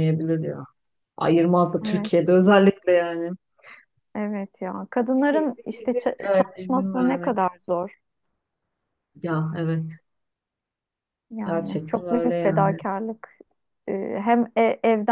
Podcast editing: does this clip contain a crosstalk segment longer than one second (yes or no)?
yes